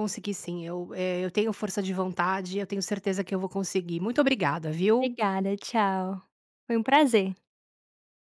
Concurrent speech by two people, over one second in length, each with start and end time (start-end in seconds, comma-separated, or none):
none